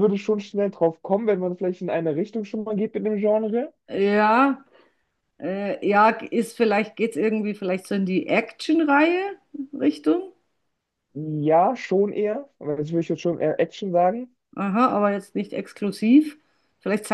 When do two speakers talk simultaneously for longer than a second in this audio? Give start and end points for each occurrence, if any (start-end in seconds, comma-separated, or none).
none